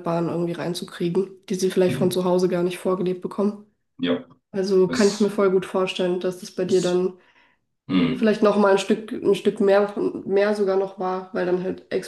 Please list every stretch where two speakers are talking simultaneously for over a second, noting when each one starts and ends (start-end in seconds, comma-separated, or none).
none